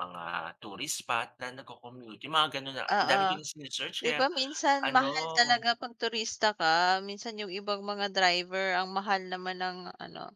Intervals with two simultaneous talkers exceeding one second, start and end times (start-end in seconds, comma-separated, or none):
none